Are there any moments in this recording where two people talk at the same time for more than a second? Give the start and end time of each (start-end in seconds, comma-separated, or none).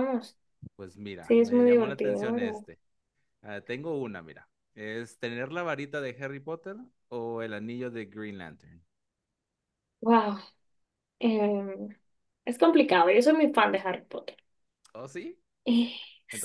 1.2-2.5